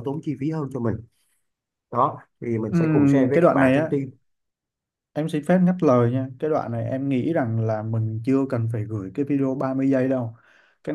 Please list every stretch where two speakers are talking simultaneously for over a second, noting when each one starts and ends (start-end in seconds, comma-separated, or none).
2.7-3.9